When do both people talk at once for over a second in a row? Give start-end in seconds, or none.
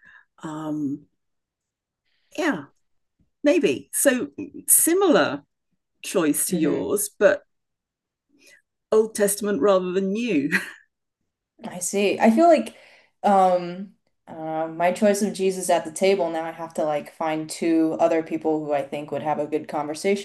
none